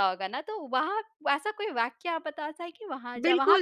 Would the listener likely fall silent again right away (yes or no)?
no